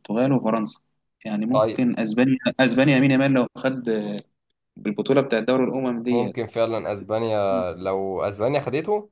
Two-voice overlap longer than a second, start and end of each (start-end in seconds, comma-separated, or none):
none